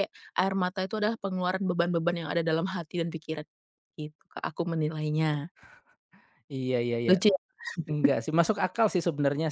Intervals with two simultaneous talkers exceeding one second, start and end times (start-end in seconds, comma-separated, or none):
none